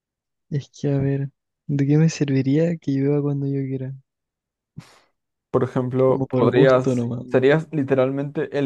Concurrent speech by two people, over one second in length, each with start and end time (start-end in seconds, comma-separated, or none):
6.1-7.6